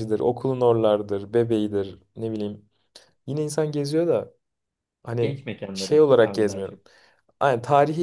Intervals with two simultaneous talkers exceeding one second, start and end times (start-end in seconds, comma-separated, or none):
5.2-6.8